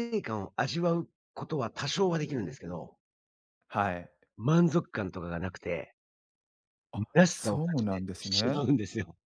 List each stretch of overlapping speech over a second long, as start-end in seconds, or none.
7.1-8.7